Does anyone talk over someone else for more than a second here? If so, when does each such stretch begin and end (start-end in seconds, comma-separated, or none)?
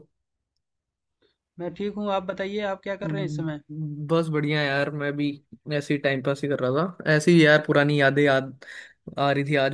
none